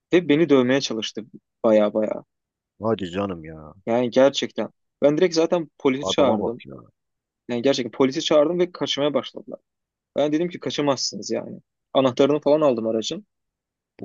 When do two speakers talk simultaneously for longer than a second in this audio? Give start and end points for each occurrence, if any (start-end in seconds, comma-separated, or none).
none